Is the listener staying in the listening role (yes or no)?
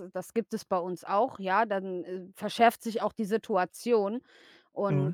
yes